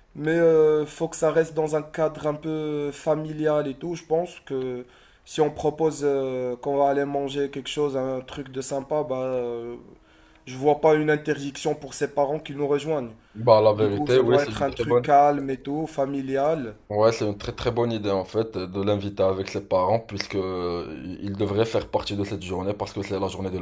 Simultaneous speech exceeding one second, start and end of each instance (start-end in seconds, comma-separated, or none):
13.8-15.1